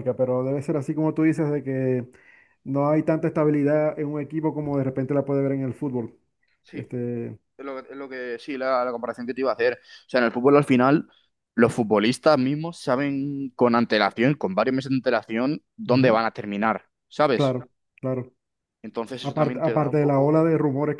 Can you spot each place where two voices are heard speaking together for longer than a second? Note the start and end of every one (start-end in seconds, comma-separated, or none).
19.2-20.4